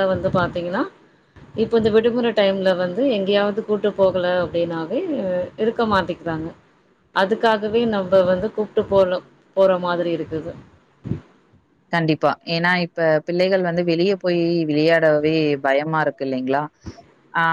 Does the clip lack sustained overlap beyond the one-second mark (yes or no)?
yes